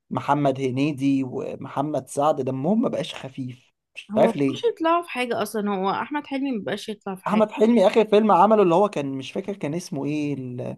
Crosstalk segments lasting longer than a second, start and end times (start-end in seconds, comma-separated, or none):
none